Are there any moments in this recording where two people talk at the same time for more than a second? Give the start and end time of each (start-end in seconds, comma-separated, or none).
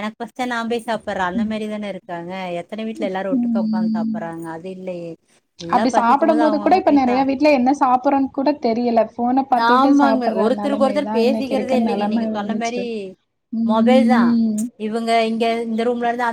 9.7-12.8